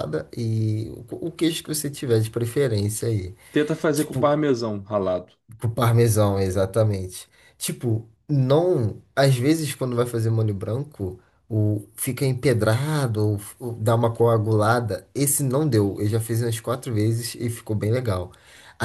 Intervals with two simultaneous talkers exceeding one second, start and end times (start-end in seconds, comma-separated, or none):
none